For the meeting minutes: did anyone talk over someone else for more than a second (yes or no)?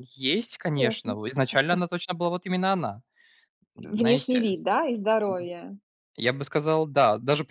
no